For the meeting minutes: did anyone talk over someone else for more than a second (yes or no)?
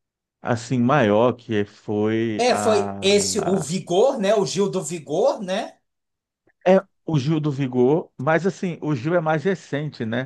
yes